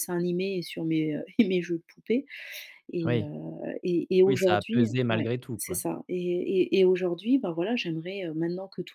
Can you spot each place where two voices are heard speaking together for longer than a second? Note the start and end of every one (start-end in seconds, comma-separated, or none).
4.3-5.8